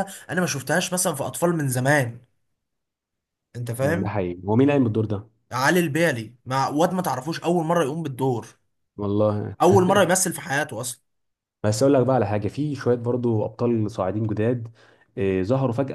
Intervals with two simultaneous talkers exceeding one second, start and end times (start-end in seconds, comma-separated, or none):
none